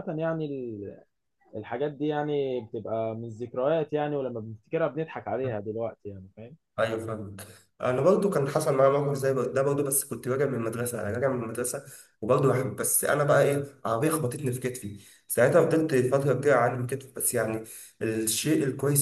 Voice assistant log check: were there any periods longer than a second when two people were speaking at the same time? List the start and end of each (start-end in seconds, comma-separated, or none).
none